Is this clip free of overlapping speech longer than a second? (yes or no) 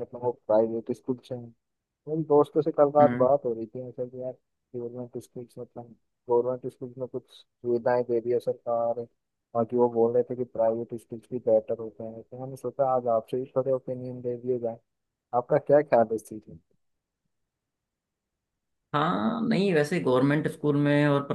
yes